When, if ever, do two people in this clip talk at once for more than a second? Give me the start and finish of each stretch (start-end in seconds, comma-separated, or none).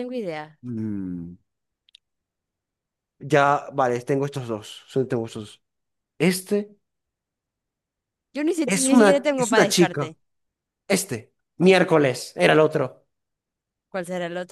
8.7-10.1